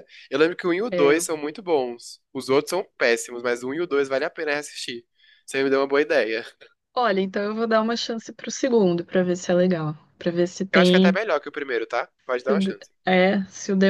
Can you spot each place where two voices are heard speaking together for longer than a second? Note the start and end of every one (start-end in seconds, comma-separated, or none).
none